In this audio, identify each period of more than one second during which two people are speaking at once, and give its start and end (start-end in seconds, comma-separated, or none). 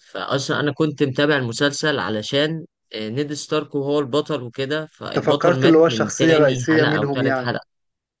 5.1-7.5